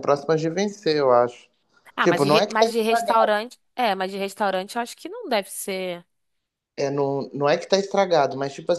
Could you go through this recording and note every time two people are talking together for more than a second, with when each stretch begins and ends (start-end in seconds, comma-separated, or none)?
2.0-3.3